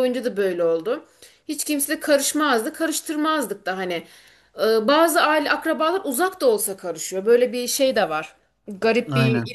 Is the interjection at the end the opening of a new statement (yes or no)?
no